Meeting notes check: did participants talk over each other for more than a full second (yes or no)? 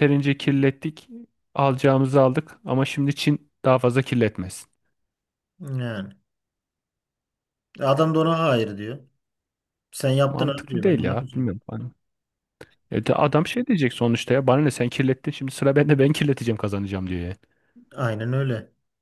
yes